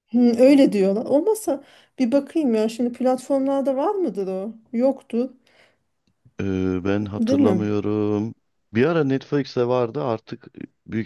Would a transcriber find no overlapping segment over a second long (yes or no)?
yes